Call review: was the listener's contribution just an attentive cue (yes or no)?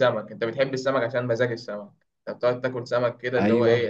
yes